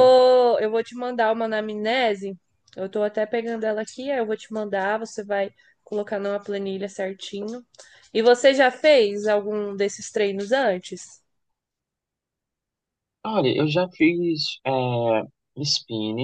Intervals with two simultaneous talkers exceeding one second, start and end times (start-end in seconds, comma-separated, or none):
none